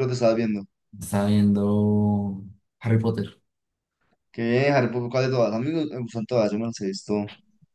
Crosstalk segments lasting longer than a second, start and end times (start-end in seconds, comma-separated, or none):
none